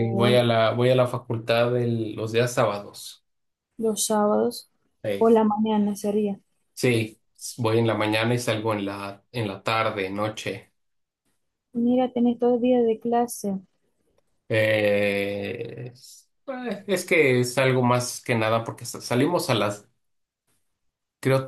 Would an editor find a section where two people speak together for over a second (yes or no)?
no